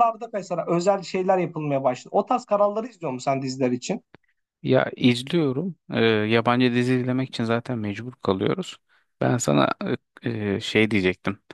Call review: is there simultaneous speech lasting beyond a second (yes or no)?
no